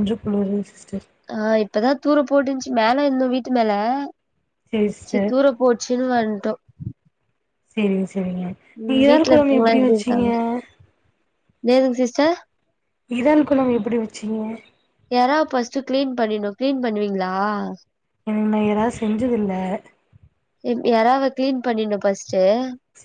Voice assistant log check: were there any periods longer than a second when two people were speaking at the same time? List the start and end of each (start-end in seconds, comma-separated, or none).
8.9-10.3